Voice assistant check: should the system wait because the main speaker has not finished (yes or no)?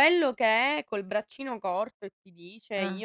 yes